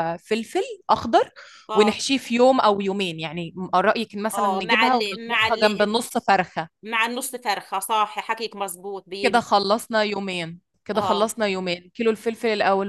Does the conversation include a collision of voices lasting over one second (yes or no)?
yes